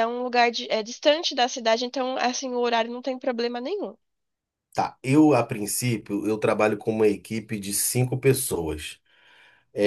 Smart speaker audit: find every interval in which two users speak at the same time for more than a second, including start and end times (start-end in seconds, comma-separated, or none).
none